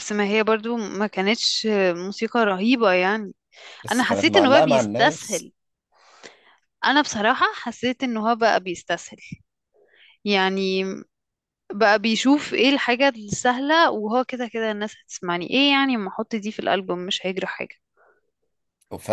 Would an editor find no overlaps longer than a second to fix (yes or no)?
no